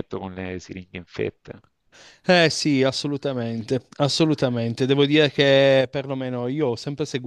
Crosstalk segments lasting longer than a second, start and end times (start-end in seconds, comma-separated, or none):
none